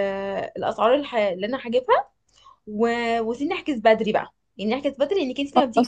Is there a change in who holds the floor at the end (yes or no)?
no